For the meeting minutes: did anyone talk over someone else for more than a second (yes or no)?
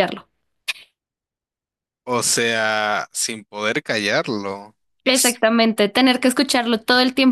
no